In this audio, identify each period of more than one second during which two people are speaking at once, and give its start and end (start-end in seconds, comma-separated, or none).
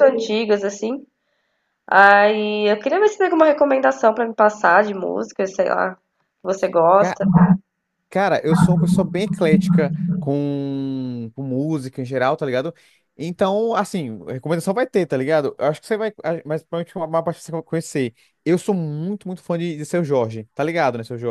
none